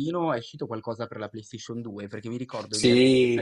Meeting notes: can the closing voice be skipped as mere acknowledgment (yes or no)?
yes